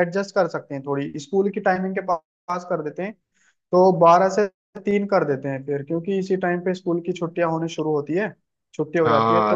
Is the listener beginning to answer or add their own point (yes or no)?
yes